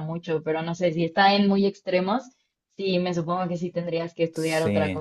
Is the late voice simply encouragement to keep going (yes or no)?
no